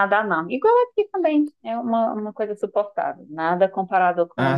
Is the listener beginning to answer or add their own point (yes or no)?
no